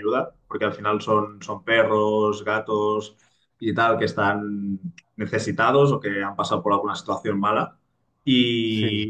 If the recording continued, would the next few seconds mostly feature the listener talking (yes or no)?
no